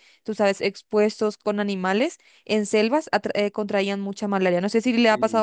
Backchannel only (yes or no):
no